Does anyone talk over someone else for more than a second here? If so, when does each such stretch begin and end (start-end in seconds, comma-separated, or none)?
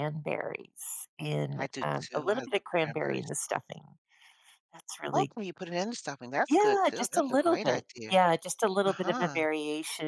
1.5-3.3, 6.5-8.2